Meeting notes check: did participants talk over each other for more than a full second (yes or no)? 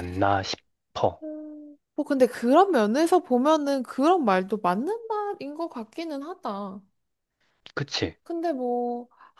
no